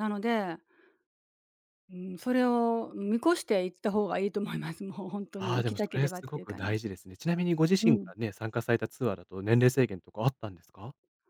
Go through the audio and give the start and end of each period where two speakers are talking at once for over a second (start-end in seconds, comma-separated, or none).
5.4-6.9